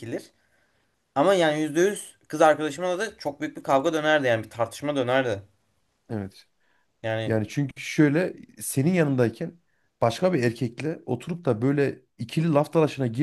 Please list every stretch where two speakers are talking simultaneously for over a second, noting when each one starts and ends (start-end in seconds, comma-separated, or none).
none